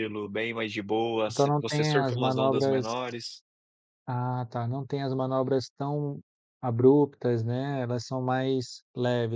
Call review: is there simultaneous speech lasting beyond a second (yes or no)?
yes